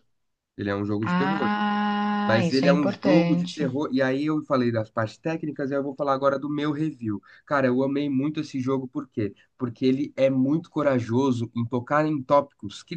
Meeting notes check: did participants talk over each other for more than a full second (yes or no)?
yes